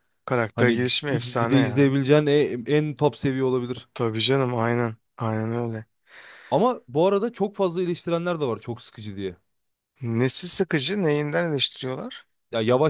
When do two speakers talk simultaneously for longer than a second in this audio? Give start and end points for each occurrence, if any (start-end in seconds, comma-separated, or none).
0.5-1.9